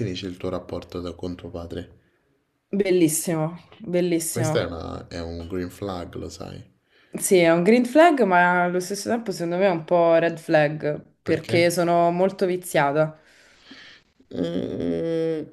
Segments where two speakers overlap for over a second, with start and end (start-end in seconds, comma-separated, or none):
none